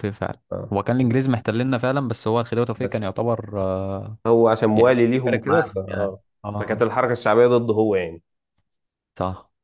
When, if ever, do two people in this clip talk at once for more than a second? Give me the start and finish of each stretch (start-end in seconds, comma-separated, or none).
4.8-6.8